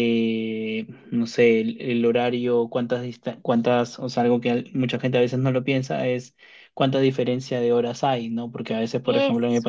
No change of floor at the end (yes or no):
yes